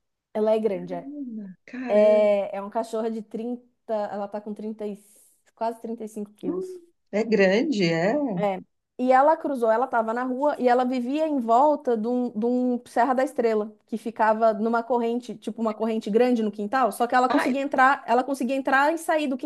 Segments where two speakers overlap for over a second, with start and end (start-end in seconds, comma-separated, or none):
none